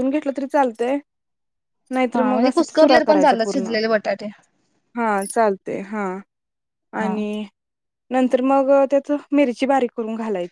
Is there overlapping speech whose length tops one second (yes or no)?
yes